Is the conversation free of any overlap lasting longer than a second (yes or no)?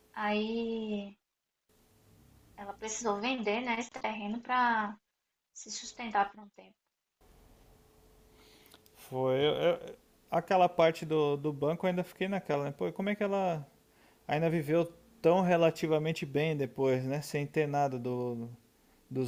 yes